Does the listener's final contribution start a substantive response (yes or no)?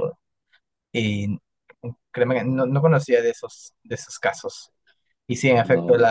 no